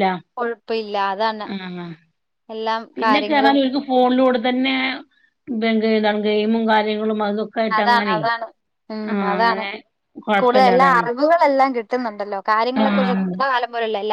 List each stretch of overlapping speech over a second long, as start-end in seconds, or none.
none